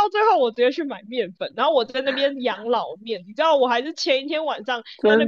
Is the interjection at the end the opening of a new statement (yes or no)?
no